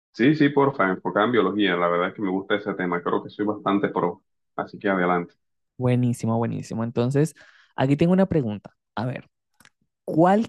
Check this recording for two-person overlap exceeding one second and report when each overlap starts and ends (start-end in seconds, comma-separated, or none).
none